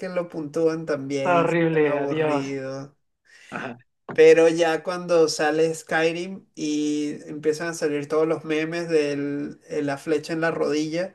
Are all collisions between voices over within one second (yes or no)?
no